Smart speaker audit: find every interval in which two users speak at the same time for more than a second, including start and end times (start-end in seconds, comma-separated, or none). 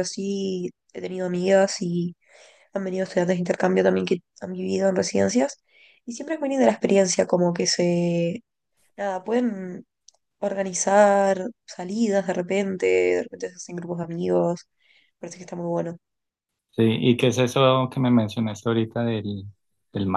none